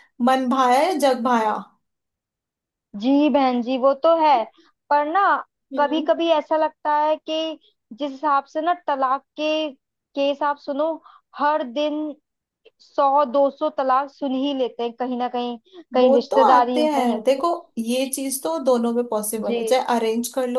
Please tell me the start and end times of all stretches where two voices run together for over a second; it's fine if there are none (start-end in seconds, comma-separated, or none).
16.0-17.5